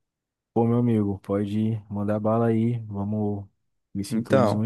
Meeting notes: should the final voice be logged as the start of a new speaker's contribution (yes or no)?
no